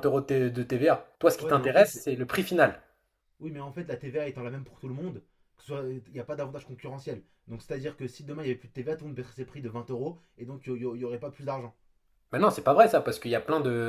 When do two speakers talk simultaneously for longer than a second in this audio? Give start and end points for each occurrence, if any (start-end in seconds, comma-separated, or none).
none